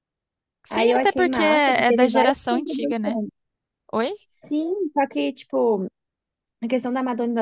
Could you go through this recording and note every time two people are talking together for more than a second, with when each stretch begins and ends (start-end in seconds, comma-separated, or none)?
0.7-3.2